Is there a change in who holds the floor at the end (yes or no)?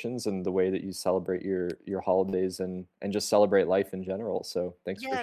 yes